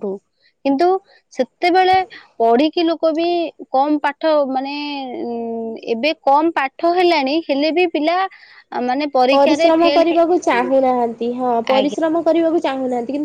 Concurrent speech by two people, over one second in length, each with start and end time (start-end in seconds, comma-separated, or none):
9.3-10.8